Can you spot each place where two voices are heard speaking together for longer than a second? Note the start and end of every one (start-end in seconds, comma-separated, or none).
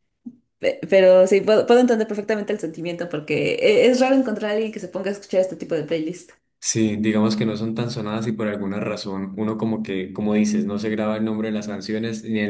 none